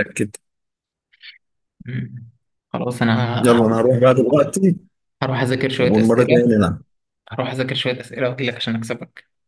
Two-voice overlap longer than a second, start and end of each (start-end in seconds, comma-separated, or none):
none